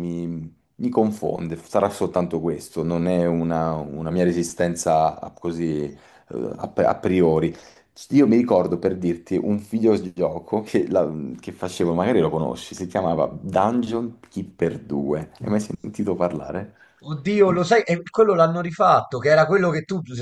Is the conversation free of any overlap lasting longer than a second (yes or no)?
yes